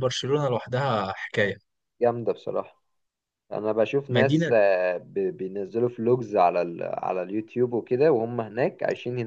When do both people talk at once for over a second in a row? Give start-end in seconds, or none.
none